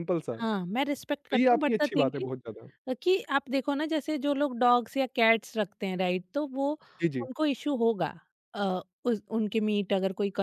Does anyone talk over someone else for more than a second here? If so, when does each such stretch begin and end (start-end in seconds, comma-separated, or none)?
1.3-2.7